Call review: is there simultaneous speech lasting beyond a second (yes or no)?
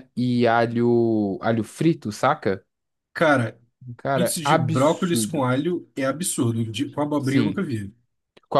yes